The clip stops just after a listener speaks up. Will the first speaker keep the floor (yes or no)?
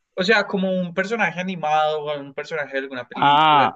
yes